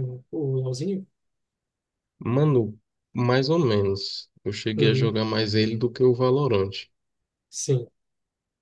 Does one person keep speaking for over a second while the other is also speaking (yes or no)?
no